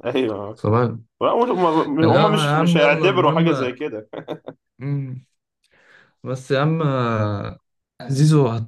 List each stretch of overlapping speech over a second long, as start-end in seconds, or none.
2.0-3.5